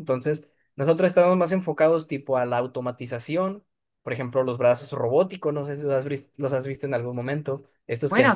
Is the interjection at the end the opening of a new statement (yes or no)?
yes